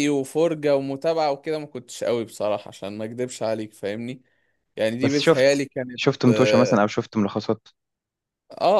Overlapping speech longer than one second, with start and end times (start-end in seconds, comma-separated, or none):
5.0-6.8